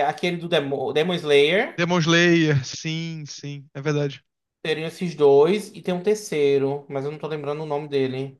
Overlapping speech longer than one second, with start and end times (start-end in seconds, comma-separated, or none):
none